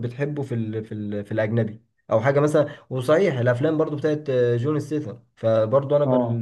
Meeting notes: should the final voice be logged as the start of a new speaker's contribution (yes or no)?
no